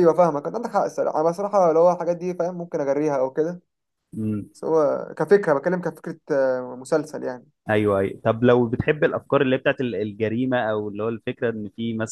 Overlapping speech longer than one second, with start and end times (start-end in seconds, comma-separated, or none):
none